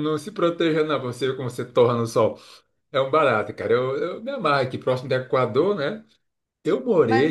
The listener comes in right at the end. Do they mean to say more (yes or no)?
yes